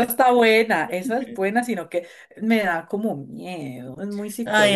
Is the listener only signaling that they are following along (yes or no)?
no